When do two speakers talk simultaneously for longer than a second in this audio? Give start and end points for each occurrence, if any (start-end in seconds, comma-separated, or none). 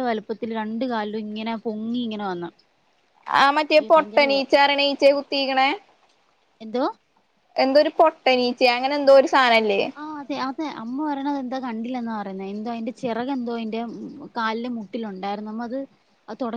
none